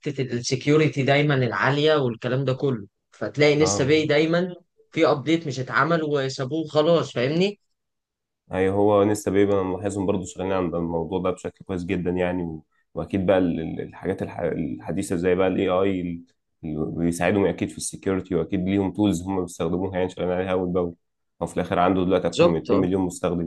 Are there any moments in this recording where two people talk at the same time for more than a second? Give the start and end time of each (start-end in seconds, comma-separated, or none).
none